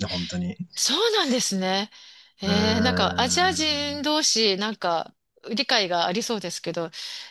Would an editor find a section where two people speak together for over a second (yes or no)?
yes